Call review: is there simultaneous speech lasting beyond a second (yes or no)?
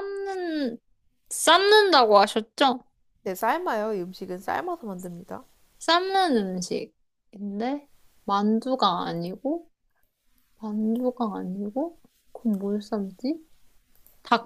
no